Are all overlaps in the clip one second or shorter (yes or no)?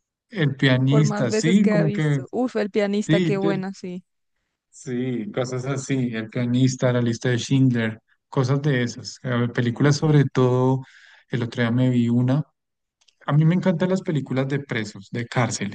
no